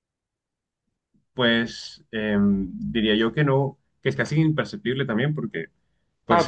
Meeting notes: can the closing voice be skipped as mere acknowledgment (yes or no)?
no